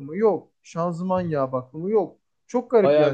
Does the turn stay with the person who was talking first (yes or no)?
no